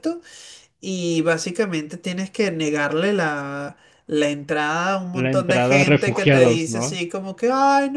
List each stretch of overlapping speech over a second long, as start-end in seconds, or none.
5.1-7.0